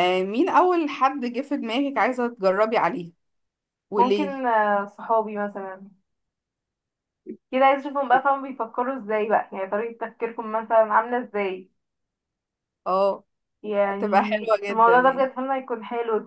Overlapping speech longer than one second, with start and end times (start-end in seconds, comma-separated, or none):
13.8-15.3